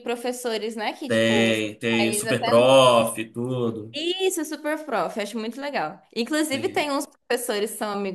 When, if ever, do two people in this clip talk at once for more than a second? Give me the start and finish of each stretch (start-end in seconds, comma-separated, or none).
none